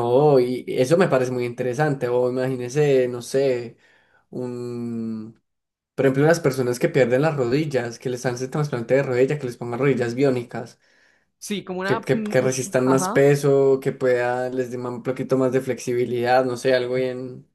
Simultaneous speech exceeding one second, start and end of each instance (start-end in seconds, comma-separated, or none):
11.8-13.3